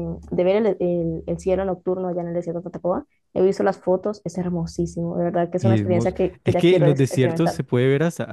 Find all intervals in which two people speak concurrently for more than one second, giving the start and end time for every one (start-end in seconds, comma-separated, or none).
5.6-7.6